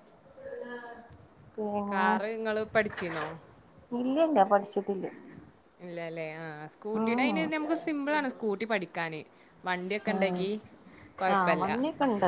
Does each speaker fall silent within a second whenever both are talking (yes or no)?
yes